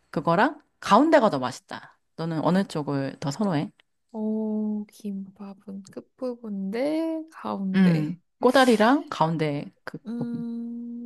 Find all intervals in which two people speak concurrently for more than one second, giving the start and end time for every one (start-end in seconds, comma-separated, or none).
none